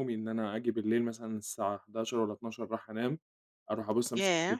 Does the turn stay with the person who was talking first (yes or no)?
yes